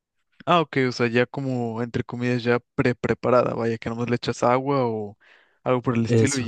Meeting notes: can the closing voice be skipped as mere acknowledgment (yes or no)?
yes